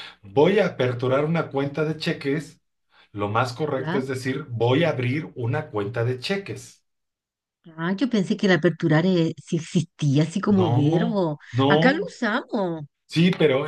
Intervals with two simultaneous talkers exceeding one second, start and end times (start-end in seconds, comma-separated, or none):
10.5-12.1